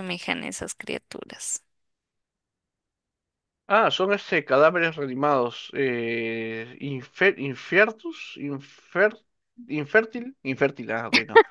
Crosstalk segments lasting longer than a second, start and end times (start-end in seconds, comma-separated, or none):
none